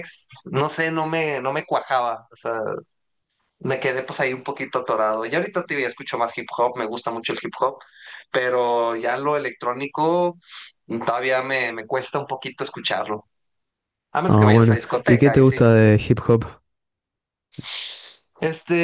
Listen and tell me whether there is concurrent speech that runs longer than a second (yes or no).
yes